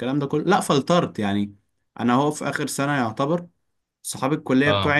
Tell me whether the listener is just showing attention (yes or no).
yes